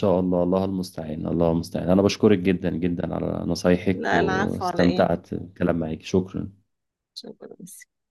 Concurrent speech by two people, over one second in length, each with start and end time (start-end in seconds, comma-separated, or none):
3.9-5.1